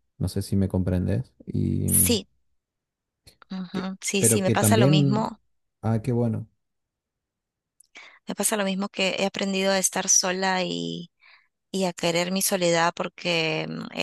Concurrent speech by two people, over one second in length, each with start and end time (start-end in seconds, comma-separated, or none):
3.7-5.3